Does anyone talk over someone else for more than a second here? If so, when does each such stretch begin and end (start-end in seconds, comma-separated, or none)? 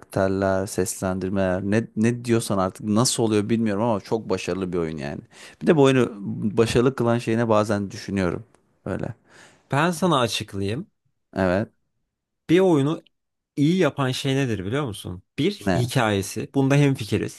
none